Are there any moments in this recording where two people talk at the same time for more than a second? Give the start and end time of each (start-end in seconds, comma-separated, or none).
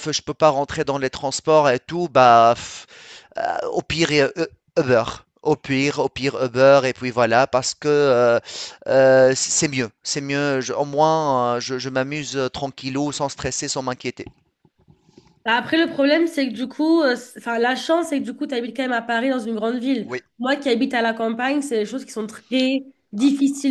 none